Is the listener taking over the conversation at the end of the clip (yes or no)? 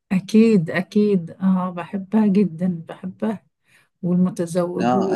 yes